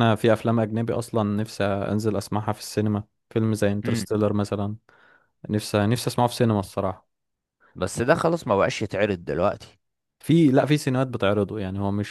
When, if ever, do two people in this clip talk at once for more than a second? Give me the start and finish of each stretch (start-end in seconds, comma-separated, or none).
none